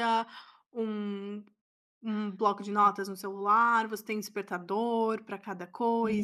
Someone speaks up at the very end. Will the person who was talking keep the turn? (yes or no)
no